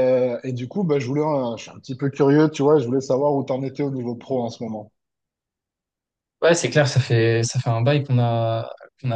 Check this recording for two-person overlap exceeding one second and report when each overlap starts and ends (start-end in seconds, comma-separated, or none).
none